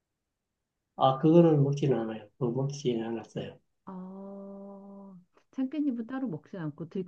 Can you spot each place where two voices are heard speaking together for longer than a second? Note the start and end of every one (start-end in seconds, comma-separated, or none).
none